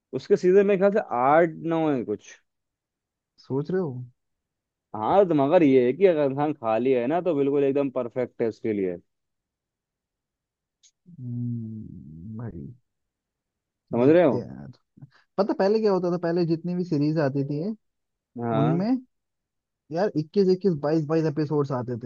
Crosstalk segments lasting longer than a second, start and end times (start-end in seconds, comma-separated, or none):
none